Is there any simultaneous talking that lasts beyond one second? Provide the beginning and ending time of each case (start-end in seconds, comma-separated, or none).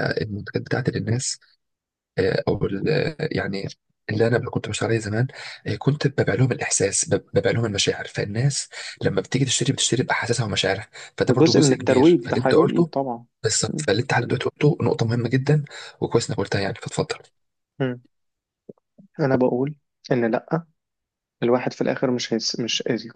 11.3-12.9